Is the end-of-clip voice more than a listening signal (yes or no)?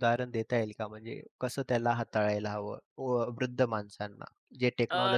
yes